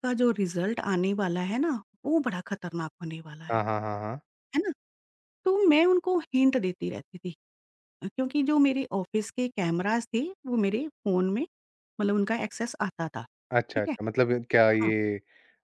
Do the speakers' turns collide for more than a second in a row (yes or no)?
no